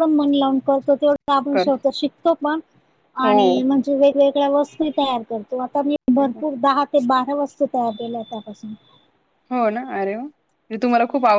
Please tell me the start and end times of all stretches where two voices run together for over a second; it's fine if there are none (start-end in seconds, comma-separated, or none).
none